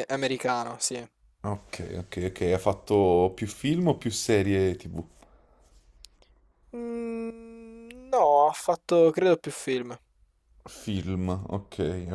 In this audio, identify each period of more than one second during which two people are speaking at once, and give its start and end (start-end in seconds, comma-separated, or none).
none